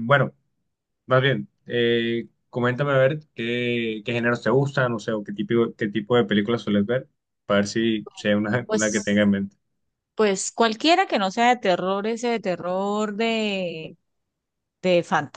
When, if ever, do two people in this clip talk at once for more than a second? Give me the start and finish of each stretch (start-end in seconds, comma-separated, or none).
none